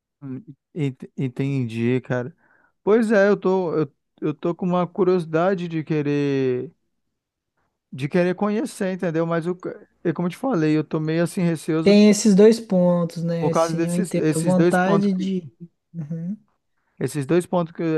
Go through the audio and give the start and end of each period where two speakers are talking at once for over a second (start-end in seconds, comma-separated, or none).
13.4-15.1